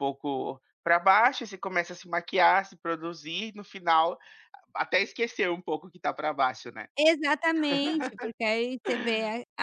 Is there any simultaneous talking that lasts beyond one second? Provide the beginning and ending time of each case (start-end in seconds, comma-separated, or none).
none